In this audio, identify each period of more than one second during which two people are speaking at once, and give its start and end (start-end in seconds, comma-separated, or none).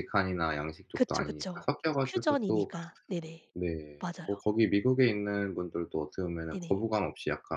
0.9-2.7